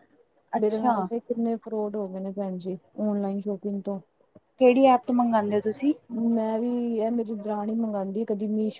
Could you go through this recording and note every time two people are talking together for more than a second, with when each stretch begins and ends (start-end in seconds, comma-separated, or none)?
none